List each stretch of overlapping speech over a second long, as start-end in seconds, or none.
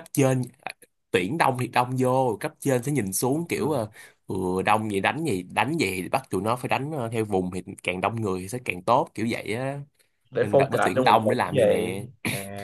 10.4-12.1